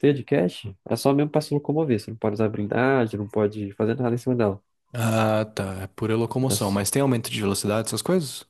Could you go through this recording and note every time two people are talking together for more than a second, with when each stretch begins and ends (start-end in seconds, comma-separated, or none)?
none